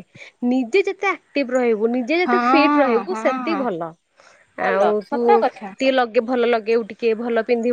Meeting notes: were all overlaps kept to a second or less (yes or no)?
no